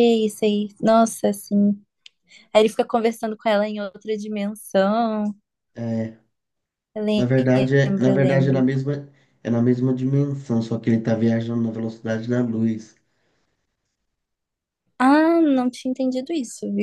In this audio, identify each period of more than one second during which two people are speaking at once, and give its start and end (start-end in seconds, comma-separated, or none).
7.2-8.6